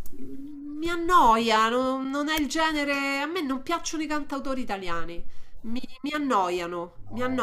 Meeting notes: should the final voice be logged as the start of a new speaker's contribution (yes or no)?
no